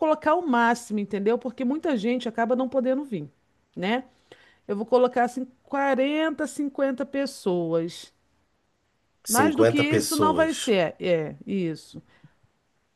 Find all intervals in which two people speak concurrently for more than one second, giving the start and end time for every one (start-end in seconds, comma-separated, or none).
9.3-10.8